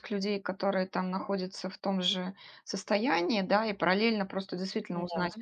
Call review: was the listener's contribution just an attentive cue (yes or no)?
yes